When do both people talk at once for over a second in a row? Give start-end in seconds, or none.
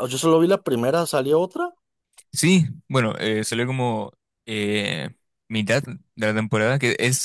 none